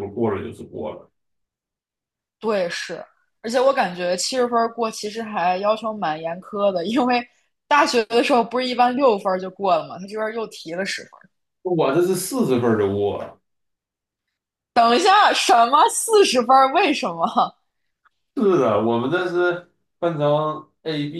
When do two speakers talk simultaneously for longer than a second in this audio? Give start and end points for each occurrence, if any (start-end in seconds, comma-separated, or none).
none